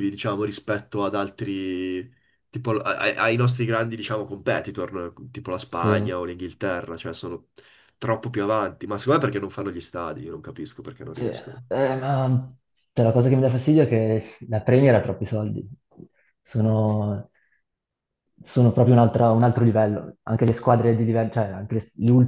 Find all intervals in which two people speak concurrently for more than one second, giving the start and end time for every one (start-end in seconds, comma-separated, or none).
none